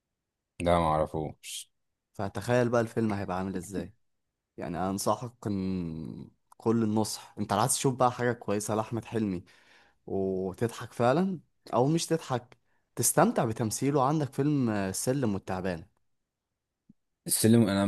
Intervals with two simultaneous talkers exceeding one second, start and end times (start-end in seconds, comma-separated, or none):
none